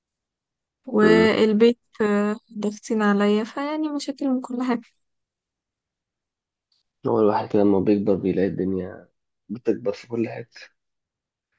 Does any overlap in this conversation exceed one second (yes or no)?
no